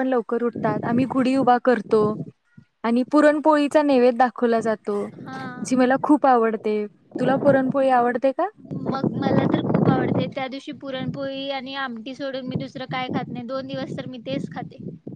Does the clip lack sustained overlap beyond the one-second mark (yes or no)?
yes